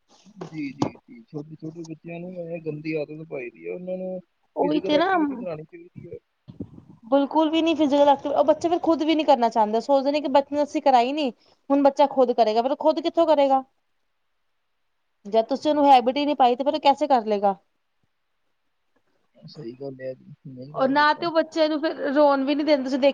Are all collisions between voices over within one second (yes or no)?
yes